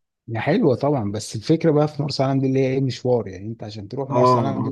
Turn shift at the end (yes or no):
yes